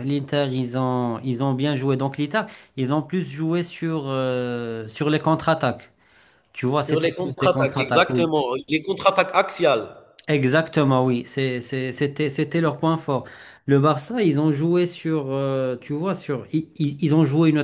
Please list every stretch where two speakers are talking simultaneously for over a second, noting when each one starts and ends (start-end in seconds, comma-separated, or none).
6.8-8.4